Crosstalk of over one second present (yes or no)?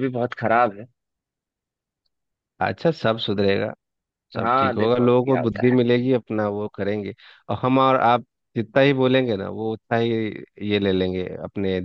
yes